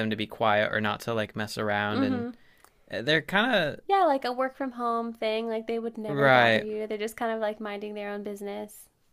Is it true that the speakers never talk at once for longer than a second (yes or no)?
yes